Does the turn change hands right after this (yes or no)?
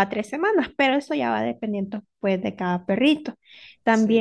yes